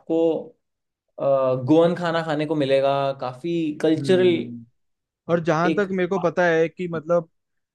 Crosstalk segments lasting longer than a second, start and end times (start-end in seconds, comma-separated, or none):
none